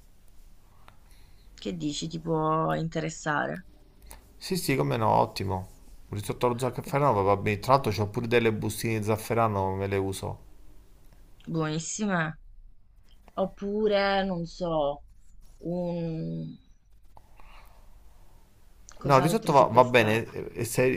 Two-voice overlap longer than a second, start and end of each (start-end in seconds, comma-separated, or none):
19.0-20.4